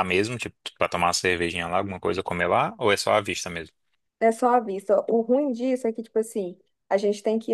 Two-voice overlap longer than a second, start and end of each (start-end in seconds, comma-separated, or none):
none